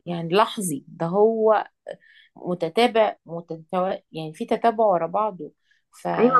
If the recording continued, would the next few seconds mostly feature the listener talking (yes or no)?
yes